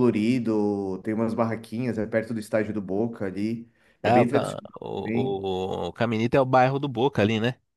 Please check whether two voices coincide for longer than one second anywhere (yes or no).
yes